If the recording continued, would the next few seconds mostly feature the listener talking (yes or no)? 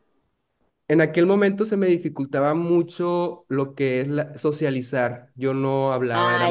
yes